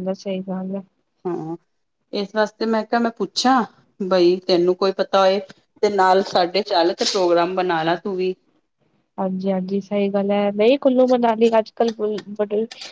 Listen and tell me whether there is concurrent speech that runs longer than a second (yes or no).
no